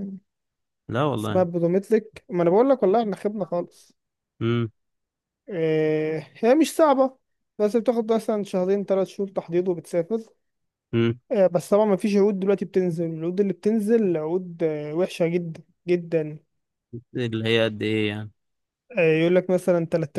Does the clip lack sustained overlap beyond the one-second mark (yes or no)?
yes